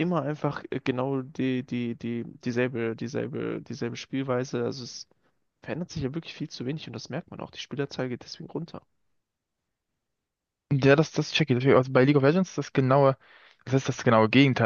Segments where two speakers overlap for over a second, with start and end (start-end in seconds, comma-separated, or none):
none